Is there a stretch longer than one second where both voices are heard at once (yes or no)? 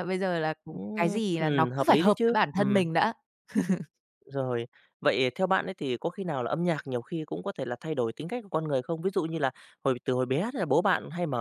yes